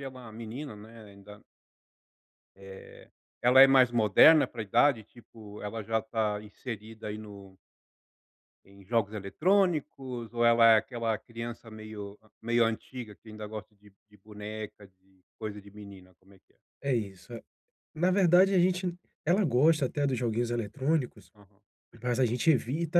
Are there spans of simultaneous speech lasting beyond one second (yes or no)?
no